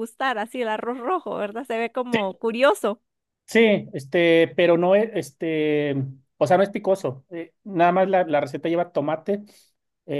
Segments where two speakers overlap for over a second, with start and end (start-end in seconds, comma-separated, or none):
none